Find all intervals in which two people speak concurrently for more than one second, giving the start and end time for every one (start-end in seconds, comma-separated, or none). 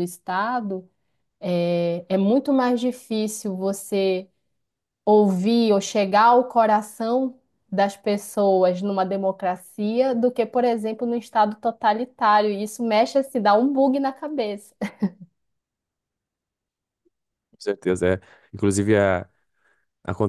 none